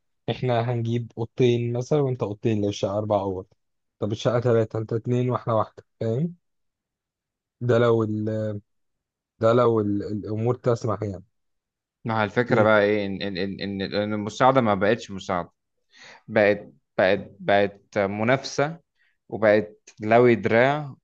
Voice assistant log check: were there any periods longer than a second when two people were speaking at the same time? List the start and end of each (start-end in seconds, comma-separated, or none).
none